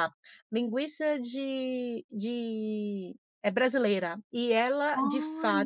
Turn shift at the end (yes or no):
no